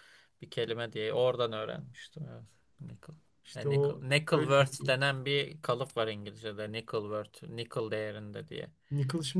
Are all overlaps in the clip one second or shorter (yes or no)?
no